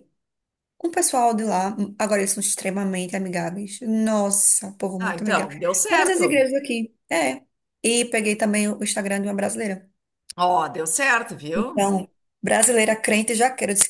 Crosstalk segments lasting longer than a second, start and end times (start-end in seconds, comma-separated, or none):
5.0-6.5